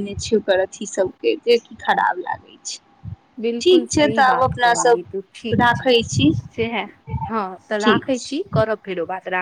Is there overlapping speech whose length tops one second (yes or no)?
yes